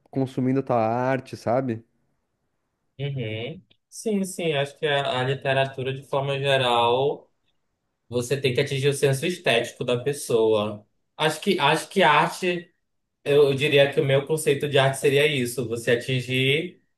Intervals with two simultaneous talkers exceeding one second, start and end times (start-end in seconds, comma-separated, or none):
none